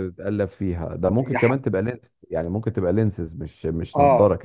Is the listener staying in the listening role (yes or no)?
no